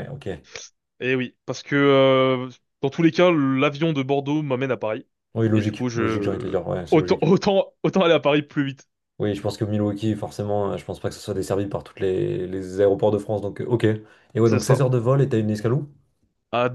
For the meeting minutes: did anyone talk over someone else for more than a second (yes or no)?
yes